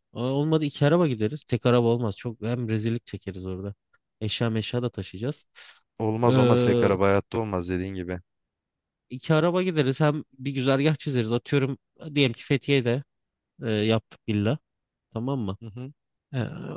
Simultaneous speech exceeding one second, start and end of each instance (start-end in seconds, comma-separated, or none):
none